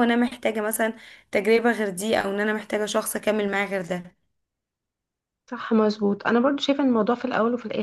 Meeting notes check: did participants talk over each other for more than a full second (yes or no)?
no